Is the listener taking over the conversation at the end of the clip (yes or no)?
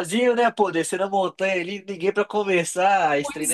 yes